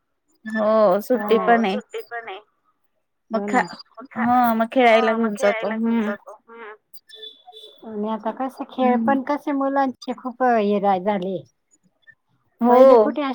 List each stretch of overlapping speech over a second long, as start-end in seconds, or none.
none